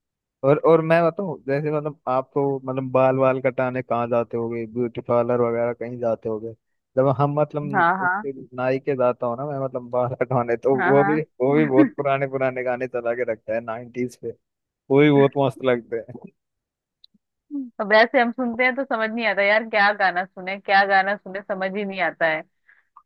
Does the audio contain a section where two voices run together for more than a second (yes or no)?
no